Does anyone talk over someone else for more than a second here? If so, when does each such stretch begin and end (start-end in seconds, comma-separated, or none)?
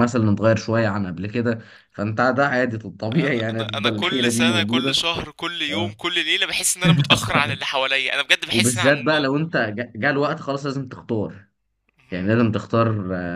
3.2-5.0